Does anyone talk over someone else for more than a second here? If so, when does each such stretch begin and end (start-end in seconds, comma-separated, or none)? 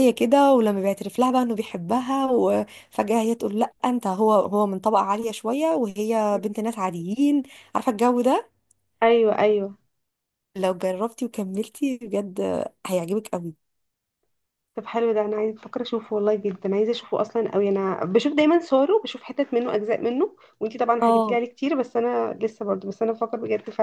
none